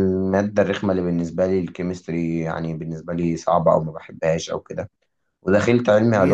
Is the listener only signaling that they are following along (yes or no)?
yes